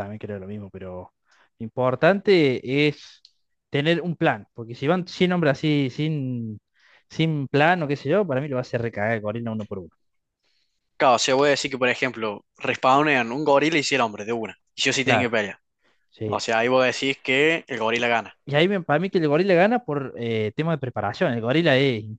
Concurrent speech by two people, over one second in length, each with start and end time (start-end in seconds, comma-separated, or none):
none